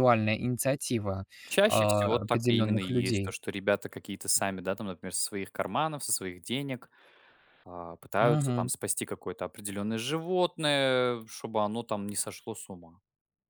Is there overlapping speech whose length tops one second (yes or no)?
yes